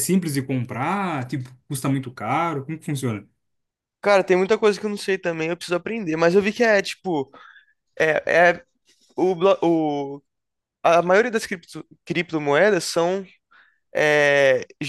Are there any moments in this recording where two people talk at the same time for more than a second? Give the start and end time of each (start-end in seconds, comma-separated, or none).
none